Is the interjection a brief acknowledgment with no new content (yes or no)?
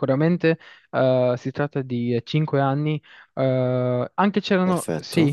yes